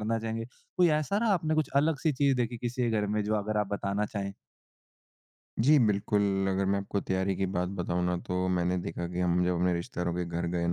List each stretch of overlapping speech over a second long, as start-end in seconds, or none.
none